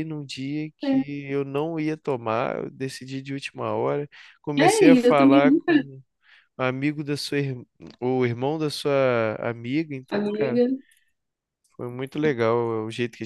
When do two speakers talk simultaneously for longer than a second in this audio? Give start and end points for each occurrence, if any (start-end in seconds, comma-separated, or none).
4.6-5.8